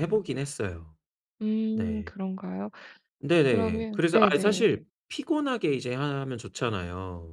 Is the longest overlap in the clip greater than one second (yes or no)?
yes